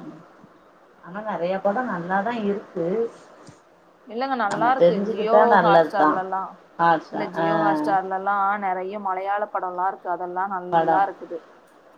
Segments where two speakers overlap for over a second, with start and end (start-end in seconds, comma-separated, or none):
4.5-6.1